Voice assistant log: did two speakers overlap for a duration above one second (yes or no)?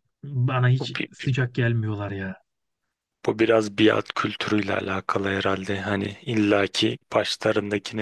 no